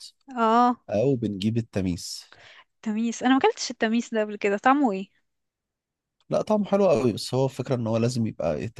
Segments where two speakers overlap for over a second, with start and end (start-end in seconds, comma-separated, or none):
none